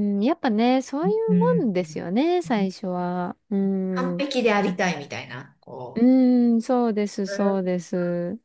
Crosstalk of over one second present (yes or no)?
no